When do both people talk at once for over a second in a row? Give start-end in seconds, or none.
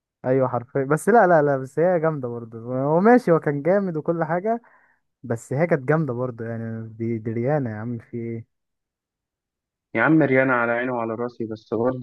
none